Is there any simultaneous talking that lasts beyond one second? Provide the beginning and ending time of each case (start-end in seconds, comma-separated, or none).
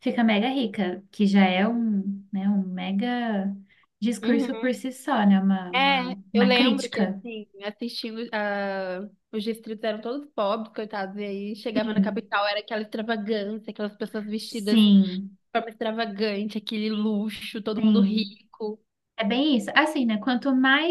5.7-7.2